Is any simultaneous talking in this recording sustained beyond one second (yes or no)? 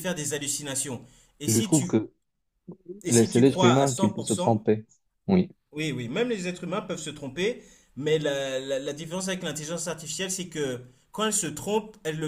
yes